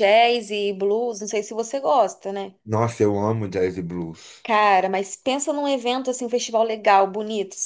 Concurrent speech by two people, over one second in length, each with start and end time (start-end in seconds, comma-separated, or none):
none